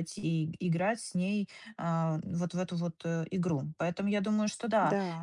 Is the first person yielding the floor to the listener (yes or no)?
no